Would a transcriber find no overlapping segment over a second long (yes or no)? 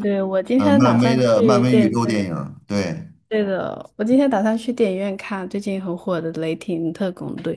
no